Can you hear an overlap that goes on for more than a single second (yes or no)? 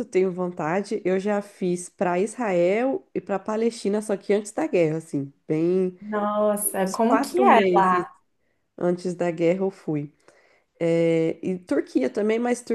yes